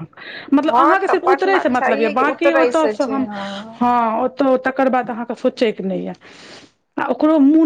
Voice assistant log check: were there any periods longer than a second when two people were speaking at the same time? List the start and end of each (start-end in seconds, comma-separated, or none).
0.7-3.3